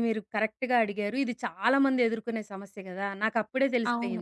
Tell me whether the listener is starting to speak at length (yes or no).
no